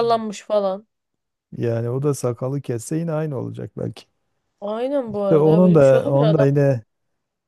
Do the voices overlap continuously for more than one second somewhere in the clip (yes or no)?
yes